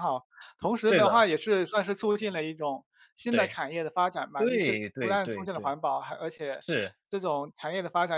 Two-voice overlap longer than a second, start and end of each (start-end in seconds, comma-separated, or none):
4.4-5.7